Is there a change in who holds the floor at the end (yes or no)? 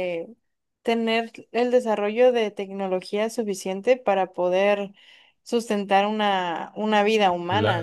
yes